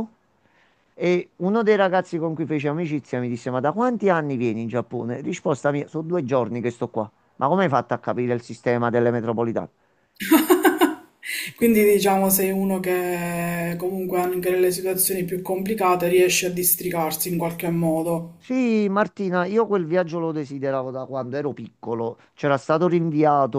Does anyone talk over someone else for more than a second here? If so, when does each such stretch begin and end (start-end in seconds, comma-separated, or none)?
none